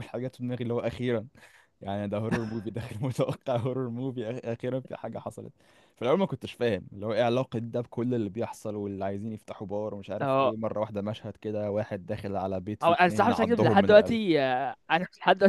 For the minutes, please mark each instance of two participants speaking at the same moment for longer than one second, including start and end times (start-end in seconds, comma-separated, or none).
12.8-14.2